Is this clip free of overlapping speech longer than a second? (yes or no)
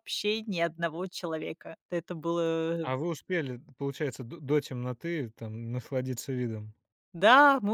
yes